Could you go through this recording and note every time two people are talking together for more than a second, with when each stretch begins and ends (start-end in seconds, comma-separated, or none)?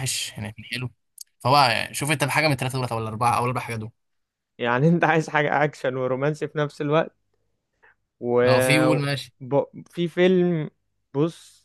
none